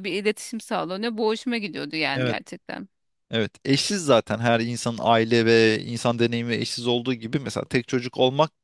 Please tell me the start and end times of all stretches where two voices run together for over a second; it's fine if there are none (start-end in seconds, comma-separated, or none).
none